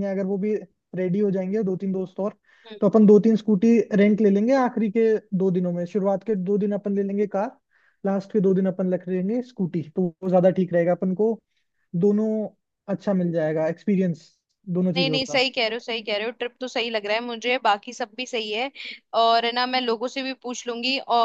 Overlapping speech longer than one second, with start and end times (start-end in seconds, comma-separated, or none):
none